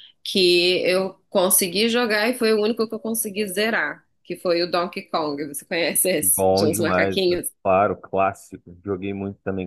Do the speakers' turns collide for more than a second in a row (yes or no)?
yes